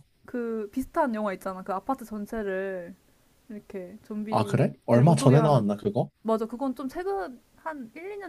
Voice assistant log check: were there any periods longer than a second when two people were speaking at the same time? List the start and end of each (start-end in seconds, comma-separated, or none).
4.3-5.7